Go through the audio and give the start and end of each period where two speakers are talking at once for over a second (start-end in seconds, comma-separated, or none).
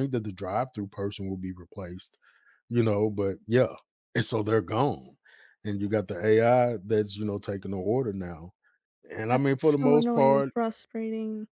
9.3-10.5